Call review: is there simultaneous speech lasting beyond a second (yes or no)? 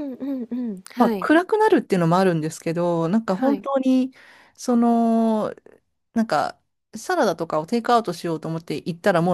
no